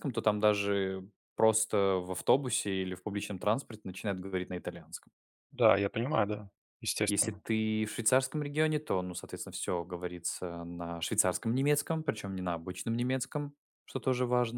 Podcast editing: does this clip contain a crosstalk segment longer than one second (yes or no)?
no